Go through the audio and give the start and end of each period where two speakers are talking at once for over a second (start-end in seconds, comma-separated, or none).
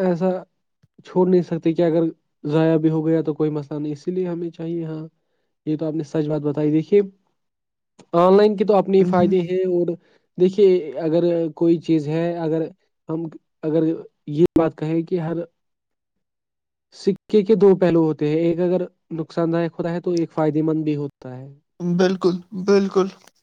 none